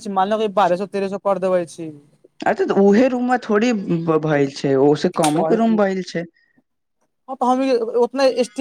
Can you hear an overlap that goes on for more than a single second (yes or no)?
no